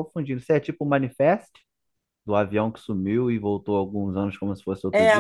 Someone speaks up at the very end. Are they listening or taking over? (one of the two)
taking over